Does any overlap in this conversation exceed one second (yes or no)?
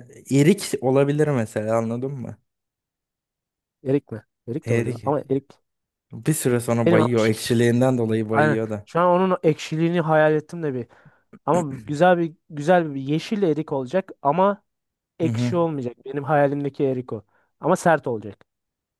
no